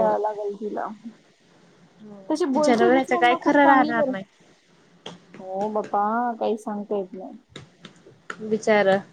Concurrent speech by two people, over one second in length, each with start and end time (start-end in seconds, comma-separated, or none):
2.3-4.1